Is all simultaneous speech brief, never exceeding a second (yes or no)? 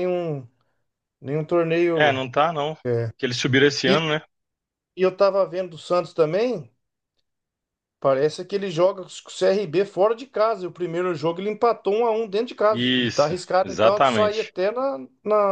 no